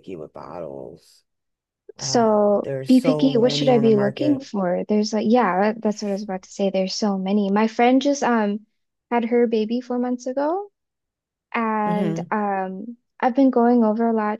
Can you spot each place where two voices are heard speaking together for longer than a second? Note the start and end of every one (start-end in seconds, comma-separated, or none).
2.0-4.5